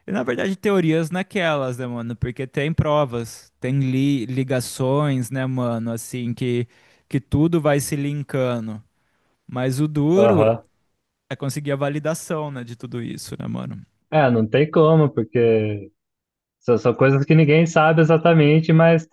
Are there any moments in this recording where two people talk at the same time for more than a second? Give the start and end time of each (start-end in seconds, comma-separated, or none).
none